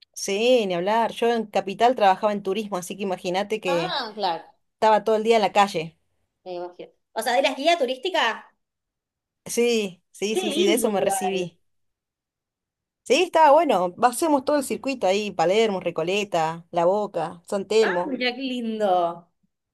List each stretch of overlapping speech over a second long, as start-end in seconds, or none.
10.3-11.5